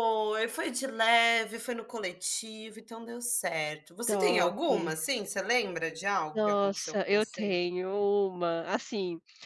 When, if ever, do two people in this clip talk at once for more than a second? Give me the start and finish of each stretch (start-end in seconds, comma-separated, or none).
6.3-7.6